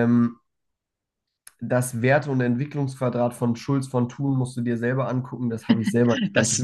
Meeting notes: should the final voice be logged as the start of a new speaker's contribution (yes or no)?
yes